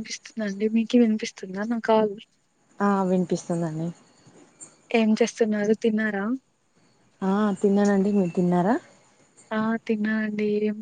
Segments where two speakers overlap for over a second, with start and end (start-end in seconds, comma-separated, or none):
none